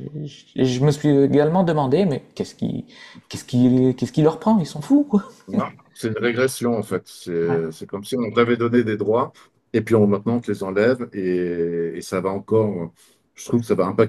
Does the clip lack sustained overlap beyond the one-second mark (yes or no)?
yes